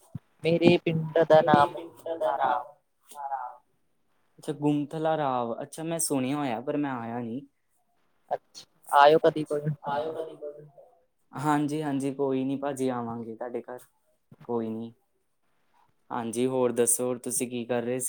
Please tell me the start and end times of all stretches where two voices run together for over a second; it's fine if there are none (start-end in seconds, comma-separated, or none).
none